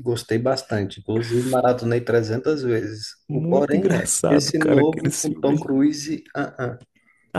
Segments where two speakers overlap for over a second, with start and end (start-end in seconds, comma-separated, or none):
3.3-5.7